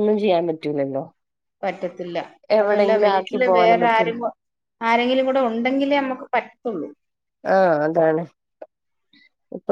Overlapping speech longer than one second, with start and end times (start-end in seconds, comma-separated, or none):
2.6-4.1